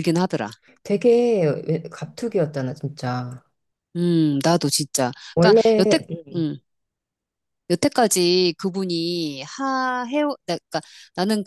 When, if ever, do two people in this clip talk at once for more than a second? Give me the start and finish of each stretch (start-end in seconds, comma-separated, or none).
none